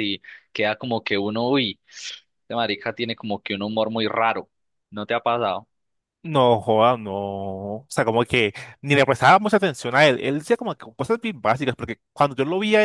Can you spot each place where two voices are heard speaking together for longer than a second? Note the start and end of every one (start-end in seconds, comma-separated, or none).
none